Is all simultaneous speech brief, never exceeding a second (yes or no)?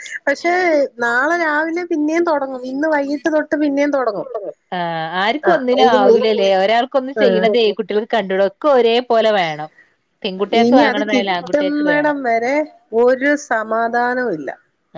no